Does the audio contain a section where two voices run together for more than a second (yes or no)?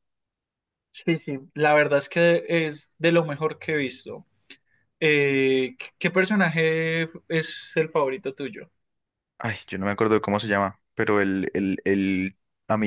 no